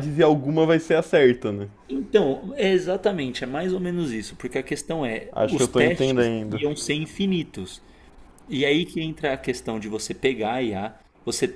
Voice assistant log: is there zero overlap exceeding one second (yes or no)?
no